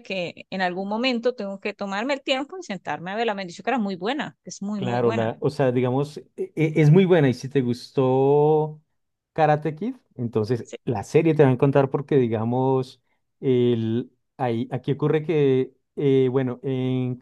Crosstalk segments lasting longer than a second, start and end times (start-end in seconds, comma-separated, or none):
none